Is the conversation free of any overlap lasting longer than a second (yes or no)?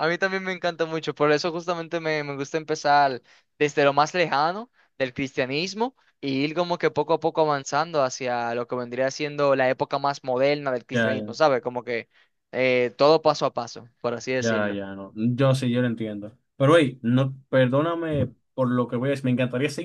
yes